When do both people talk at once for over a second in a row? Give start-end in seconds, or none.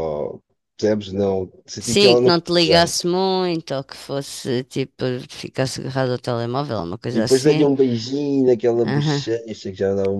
1.8-3.1